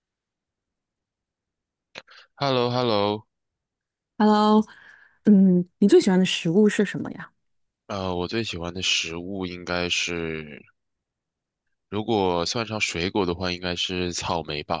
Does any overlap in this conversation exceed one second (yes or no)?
no